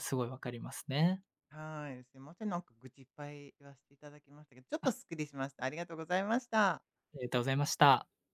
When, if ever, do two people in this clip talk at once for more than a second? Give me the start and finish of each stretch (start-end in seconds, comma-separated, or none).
none